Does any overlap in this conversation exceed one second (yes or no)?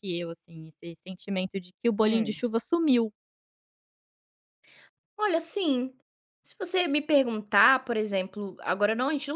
no